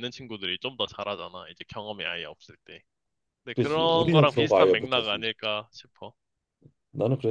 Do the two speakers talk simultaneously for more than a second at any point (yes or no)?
yes